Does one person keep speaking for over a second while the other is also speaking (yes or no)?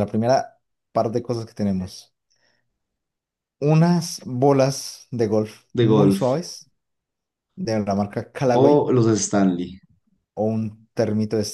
no